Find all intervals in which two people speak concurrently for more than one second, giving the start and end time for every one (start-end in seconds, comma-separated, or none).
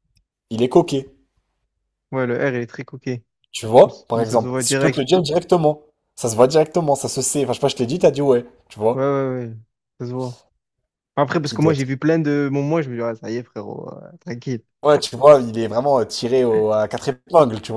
3.8-5.1